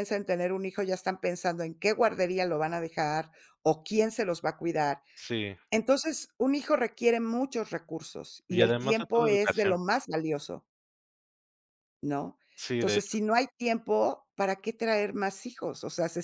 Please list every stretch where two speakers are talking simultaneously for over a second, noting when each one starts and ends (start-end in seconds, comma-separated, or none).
8.5-9.8